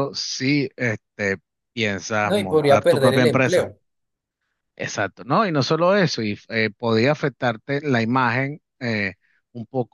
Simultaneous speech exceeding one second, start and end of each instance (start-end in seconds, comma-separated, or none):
2.2-3.7